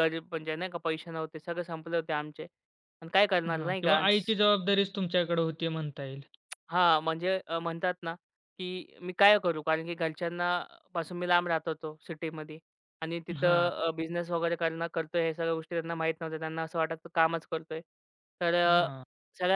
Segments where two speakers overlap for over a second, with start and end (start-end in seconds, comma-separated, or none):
none